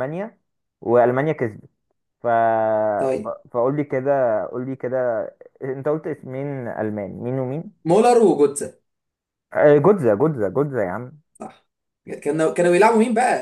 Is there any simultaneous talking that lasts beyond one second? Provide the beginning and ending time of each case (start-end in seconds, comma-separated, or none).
none